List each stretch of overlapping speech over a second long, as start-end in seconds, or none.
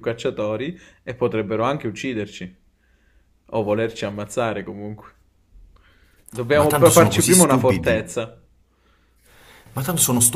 6.5-8.1